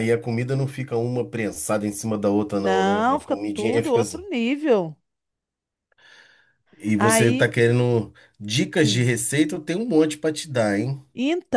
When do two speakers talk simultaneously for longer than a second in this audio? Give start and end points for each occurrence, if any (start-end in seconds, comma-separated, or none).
2.6-4.2